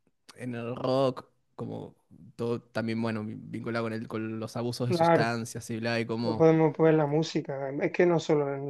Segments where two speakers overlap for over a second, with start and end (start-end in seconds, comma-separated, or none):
none